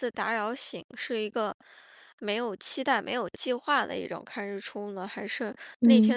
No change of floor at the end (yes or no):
yes